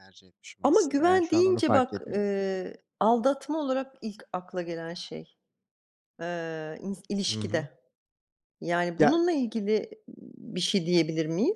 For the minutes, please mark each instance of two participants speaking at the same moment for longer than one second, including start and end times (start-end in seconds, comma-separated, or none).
0.6-2.2